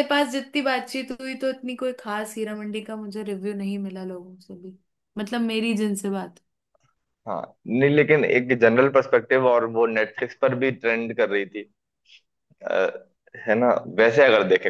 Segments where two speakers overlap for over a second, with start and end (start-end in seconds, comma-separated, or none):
none